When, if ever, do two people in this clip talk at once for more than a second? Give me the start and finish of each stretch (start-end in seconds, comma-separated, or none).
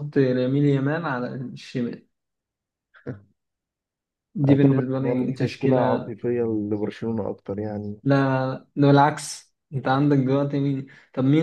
4.5-6.1